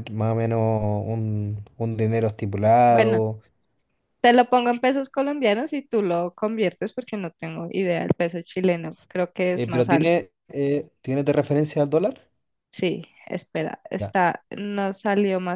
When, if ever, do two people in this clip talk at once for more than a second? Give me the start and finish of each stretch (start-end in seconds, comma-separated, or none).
none